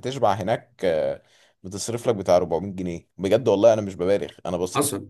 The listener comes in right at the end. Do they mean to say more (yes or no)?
yes